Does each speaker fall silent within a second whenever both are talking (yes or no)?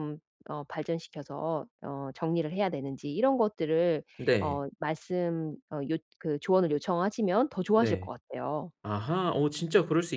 yes